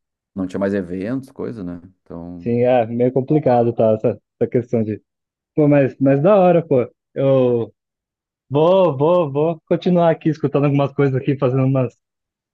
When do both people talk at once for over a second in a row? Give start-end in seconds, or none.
none